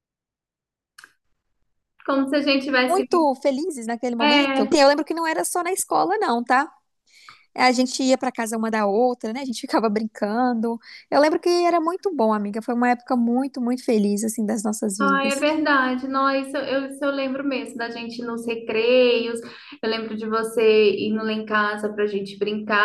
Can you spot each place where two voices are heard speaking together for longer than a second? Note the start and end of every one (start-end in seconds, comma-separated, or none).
none